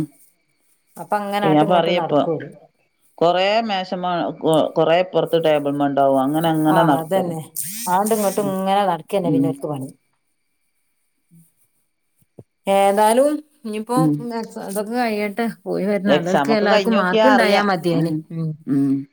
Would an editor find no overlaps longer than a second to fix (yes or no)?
no